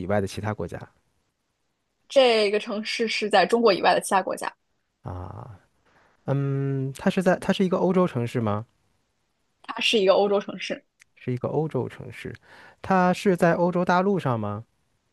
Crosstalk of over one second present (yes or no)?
no